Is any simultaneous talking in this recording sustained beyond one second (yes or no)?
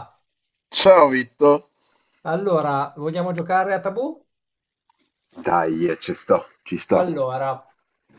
no